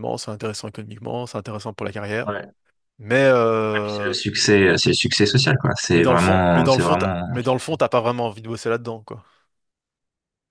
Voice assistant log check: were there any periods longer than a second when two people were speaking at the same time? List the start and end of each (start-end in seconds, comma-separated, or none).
5.9-7.7